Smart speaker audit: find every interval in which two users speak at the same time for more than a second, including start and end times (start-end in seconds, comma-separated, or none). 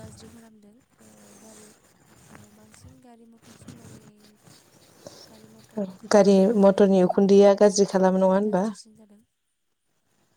6.2-8.6